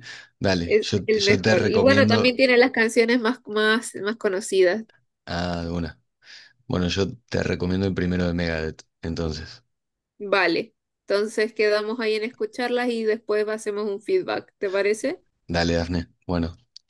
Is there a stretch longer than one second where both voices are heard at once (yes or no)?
yes